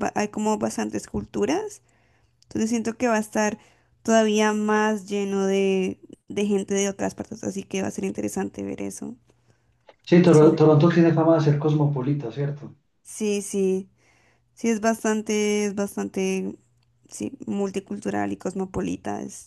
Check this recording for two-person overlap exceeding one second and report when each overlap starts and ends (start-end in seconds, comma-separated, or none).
none